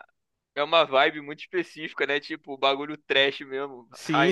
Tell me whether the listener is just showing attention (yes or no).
no